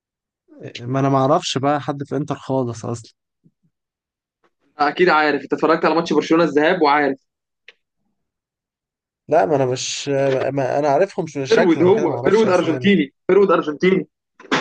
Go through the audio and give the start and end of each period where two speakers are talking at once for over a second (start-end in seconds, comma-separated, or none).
11.5-12.9